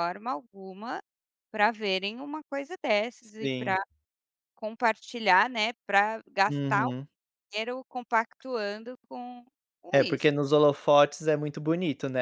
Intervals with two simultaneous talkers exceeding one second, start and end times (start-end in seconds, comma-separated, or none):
none